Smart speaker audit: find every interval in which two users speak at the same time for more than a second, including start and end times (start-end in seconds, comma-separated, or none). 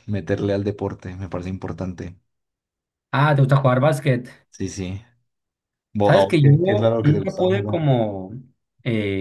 6.0-7.8